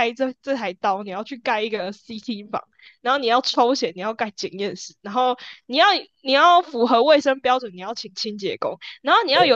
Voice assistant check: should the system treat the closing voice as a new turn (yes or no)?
no